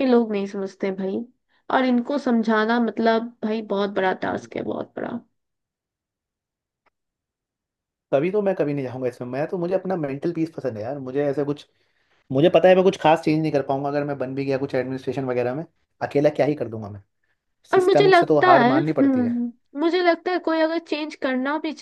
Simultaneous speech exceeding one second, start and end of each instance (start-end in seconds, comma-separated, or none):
17.7-19.4